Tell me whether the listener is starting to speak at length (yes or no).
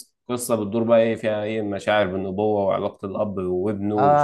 yes